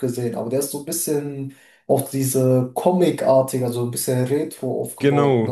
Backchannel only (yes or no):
no